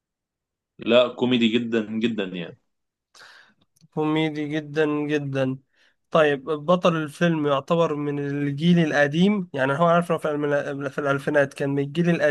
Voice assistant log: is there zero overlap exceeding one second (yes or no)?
yes